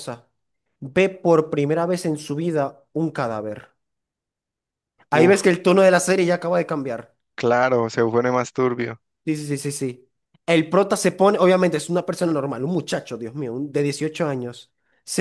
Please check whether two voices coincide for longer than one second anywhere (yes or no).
no